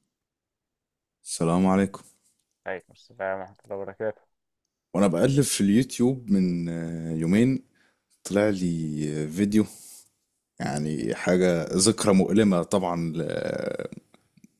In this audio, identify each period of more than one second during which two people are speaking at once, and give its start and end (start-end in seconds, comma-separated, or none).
none